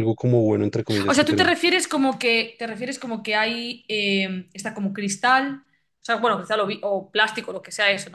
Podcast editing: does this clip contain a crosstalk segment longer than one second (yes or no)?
no